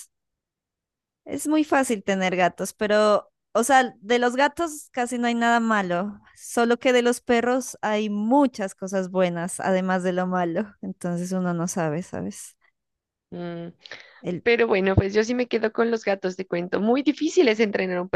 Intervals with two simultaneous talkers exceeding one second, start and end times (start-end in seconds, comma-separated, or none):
none